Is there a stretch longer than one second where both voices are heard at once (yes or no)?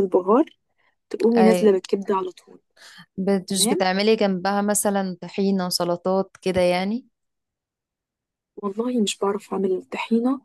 no